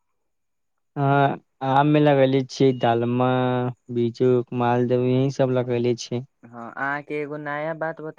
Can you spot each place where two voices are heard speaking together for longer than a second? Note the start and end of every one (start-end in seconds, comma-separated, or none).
none